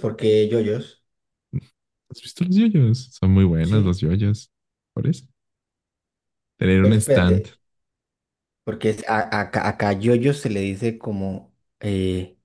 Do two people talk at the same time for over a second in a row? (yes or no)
no